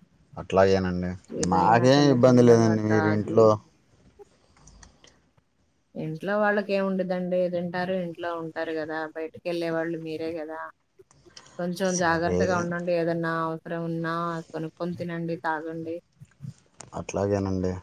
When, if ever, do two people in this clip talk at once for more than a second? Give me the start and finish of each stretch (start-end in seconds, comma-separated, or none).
1.5-3.4